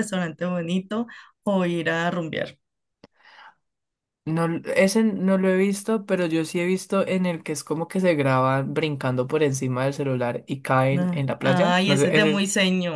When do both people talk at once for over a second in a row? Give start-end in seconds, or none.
10.9-12.4